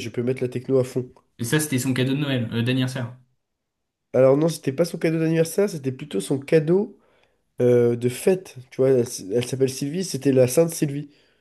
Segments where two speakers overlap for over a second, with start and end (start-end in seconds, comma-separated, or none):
none